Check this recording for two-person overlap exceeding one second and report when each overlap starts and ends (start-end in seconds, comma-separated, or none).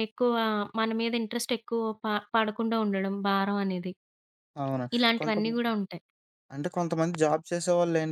none